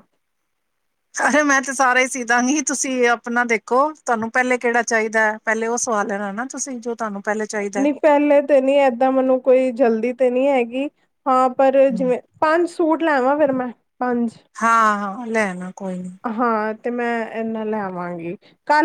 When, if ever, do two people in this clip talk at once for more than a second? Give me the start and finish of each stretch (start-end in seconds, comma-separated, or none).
none